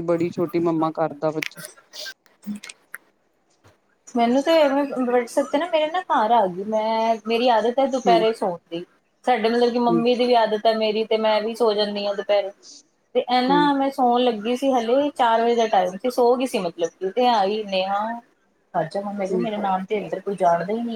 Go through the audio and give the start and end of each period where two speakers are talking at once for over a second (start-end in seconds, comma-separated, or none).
none